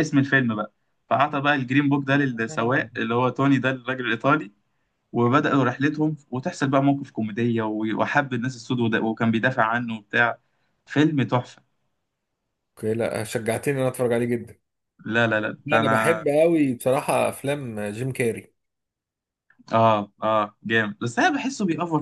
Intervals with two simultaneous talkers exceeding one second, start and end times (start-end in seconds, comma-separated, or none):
none